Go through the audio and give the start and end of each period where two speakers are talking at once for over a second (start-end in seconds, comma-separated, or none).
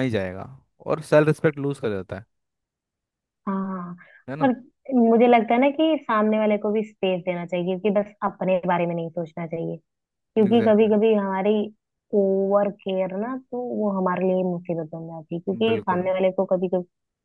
none